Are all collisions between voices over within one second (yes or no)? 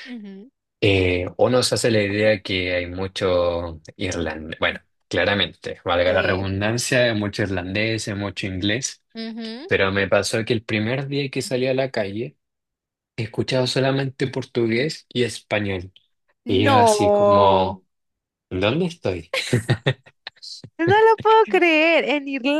no